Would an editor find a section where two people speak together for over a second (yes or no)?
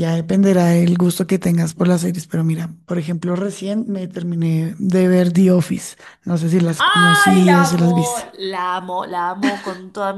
yes